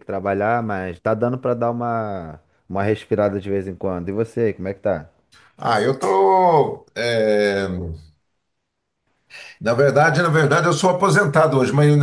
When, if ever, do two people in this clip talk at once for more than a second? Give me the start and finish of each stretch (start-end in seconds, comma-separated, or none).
none